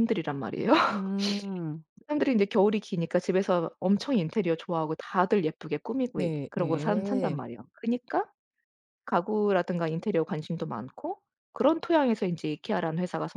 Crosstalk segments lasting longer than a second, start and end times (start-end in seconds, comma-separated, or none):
6.2-7.4